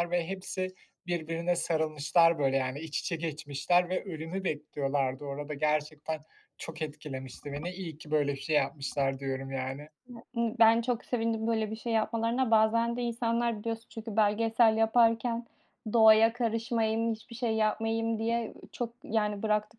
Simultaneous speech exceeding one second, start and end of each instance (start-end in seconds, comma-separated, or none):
none